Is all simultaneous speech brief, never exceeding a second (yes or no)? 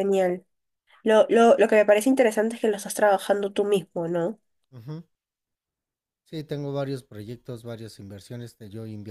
yes